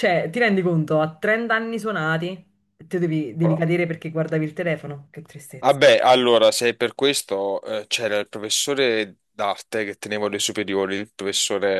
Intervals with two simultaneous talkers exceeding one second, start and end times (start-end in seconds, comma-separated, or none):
none